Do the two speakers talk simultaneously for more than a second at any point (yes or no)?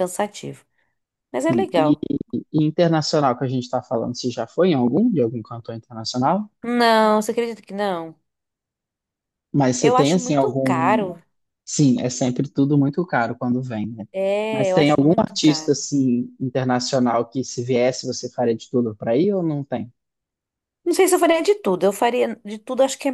yes